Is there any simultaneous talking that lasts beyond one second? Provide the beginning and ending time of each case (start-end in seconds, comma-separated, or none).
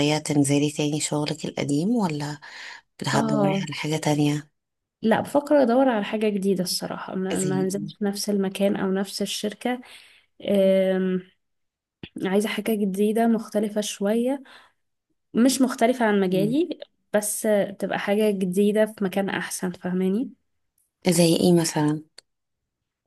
none